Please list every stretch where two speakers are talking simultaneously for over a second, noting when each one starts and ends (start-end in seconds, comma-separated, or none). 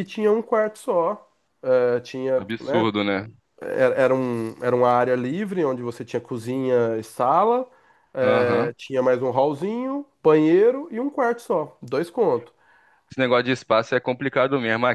none